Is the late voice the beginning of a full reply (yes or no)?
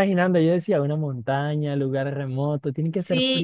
yes